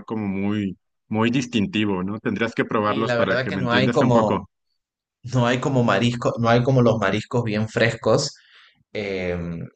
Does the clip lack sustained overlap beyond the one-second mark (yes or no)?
no